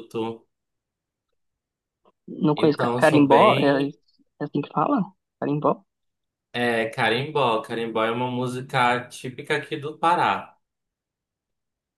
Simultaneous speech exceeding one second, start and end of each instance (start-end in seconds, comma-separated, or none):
2.5-4.0